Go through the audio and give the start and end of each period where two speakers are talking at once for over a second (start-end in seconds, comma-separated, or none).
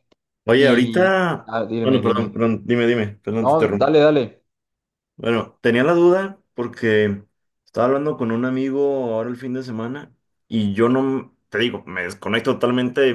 0.6-2.4